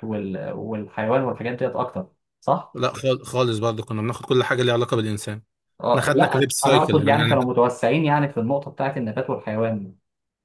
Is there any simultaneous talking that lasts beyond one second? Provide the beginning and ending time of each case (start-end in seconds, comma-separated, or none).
5.9-7.4